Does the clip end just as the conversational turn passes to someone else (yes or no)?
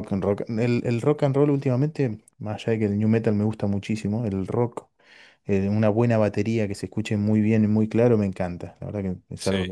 yes